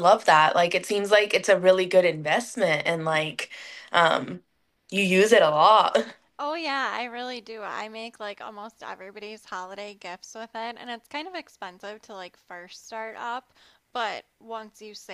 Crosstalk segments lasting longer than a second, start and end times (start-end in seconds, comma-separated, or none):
none